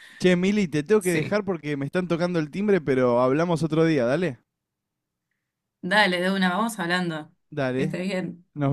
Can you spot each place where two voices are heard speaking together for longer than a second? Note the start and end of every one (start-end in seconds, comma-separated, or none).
none